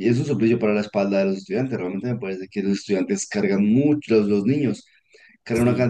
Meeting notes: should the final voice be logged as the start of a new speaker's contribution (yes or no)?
no